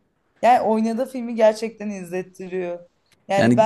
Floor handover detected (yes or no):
no